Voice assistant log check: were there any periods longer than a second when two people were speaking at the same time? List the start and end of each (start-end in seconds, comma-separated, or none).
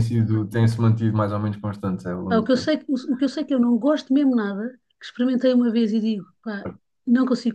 none